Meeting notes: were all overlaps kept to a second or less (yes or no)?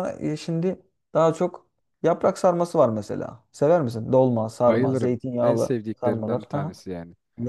no